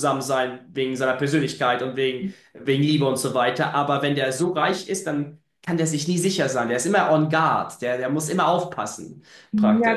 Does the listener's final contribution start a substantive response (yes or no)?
yes